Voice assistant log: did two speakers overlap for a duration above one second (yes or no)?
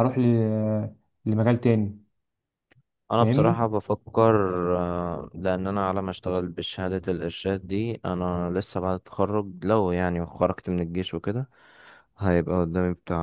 no